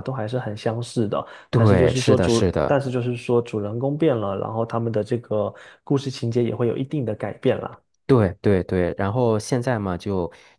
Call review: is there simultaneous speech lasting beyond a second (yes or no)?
yes